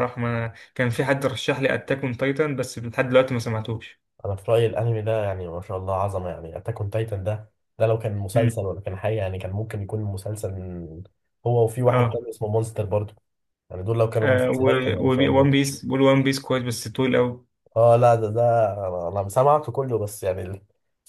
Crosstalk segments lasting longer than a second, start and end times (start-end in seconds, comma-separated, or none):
14.2-15.6